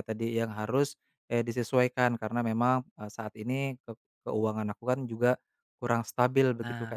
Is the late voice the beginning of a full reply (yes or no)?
yes